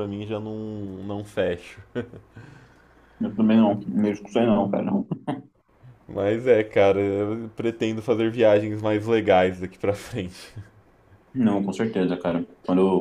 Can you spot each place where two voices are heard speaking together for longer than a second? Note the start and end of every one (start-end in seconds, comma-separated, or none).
none